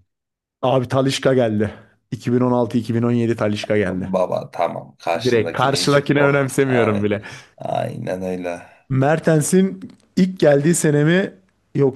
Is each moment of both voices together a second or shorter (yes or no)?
no